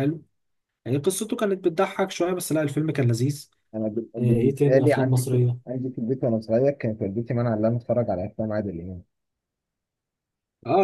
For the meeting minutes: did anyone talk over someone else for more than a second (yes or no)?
yes